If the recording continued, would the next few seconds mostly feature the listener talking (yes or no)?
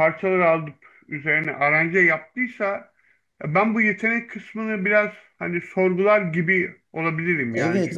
yes